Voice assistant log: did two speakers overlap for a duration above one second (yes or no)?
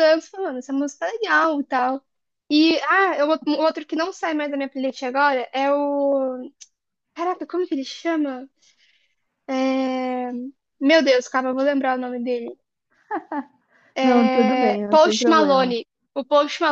yes